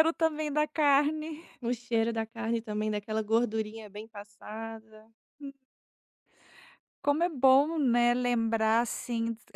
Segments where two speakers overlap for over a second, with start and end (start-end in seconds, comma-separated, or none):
none